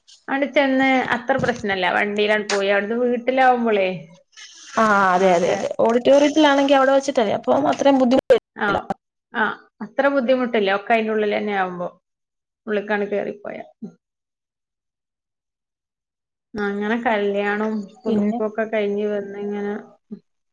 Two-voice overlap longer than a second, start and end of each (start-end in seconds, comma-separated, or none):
none